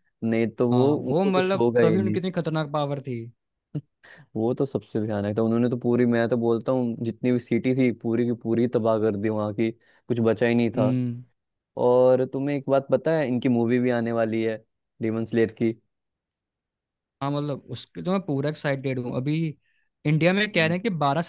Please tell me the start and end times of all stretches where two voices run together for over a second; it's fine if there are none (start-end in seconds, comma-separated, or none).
0.7-2.2